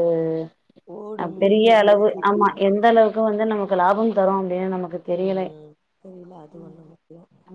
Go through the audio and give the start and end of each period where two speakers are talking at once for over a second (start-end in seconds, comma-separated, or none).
1.2-3.1